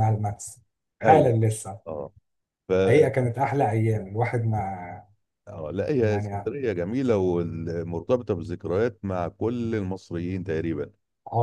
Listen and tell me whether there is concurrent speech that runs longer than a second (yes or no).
no